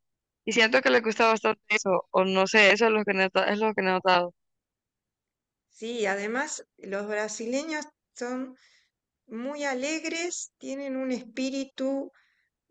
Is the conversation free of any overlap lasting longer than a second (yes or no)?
yes